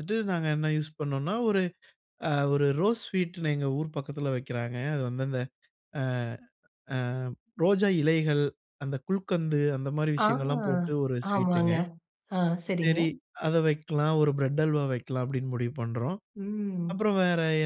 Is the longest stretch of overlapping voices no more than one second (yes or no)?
yes